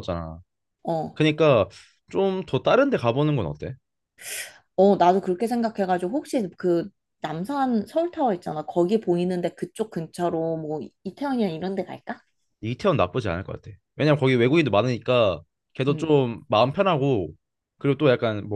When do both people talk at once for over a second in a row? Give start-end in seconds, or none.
none